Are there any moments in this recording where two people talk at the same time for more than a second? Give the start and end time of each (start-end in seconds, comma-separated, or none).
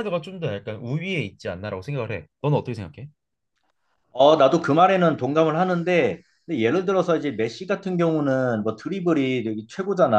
none